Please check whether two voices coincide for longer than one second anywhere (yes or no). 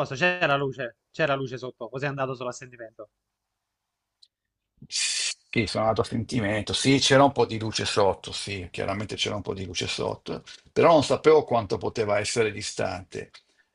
no